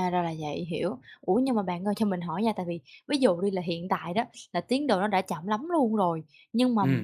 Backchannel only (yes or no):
yes